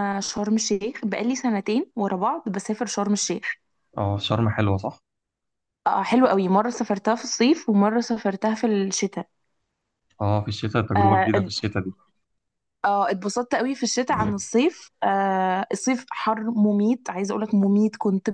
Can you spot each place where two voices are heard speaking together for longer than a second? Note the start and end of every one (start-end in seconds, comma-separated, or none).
none